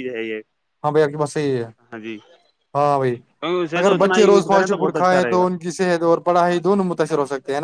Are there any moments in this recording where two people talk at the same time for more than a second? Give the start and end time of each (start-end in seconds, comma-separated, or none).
3.8-5.4